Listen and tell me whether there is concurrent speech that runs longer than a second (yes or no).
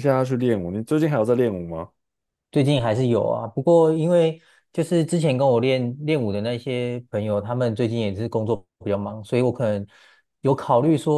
no